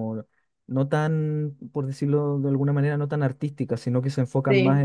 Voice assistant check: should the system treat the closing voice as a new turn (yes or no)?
no